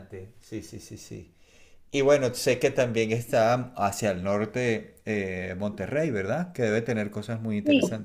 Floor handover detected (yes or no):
yes